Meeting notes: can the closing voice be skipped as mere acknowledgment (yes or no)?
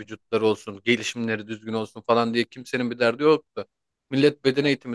yes